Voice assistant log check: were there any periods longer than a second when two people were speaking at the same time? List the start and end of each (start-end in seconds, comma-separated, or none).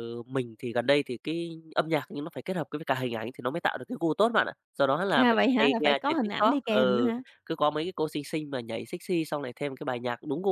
5.1-7.2